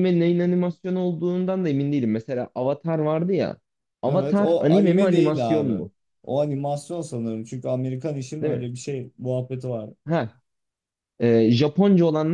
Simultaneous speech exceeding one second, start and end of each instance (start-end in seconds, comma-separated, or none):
4.1-5.8